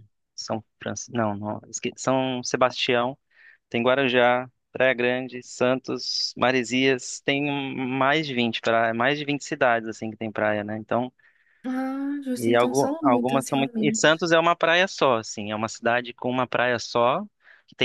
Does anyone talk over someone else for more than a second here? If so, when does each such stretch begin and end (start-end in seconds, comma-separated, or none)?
12.4-14.0